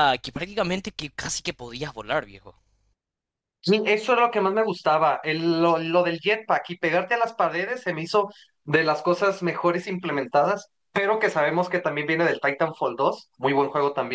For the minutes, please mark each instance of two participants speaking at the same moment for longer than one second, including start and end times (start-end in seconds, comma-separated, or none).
none